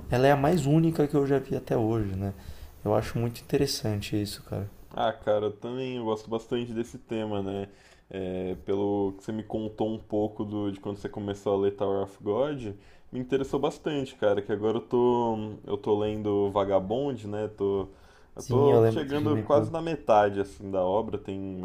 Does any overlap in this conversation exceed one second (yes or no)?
yes